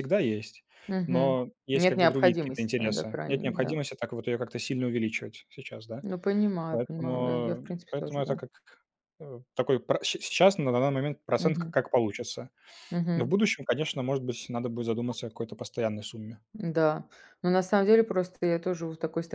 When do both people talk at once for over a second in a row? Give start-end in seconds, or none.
1.1-3.8, 6.7-8.3